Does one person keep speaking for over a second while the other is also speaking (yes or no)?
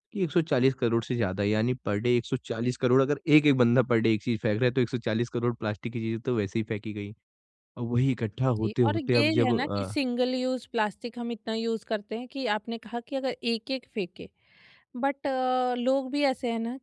yes